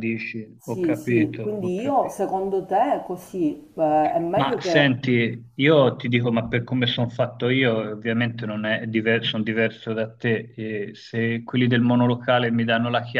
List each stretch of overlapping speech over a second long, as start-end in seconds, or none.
0.6-2.2